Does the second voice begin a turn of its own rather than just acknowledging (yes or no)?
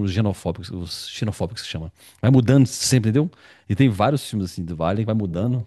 no